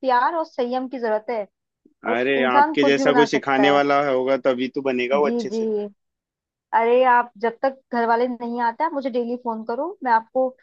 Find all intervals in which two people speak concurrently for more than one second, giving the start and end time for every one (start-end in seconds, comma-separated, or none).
2.2-3.8